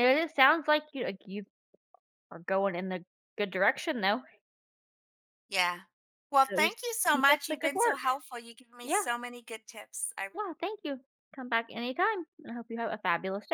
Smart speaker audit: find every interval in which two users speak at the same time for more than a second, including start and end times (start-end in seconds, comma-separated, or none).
6.4-8.0